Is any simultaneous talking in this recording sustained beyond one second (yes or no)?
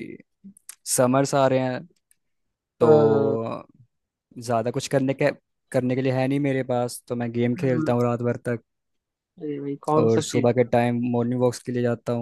no